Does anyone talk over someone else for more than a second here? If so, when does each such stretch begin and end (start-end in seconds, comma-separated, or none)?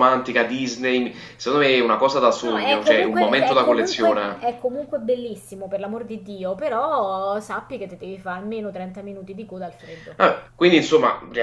2.4-4.4